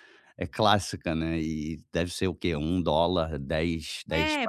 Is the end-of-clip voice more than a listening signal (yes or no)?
yes